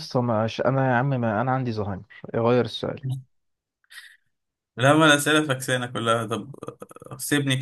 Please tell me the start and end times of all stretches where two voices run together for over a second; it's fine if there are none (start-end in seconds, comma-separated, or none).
none